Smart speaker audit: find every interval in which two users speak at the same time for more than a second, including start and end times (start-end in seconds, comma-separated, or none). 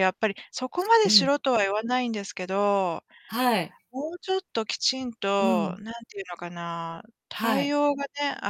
none